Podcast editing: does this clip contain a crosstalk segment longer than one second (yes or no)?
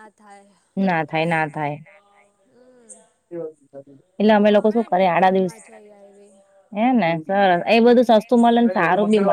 yes